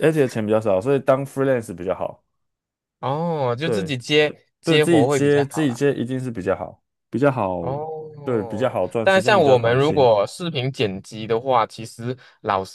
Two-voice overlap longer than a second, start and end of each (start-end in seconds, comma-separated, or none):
4.6-5.8, 8.2-10.1